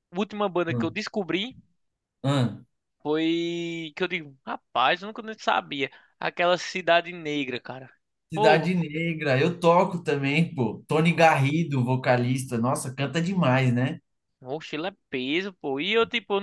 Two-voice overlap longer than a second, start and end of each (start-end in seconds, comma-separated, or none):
none